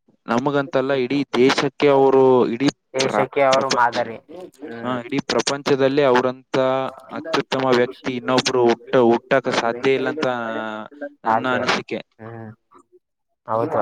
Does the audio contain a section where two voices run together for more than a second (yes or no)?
no